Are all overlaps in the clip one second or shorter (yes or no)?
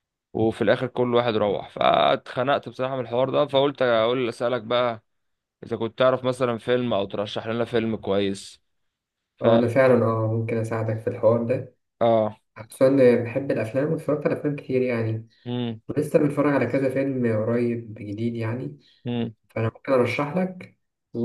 yes